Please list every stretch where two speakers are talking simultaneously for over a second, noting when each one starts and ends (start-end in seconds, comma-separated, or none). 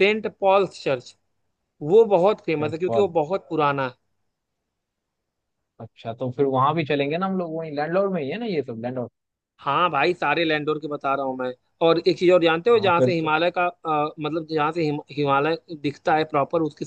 none